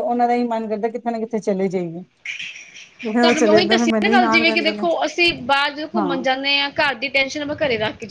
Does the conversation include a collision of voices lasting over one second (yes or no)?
yes